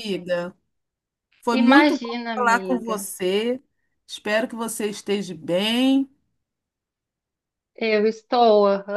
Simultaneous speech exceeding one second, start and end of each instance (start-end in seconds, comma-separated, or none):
1.6-3.0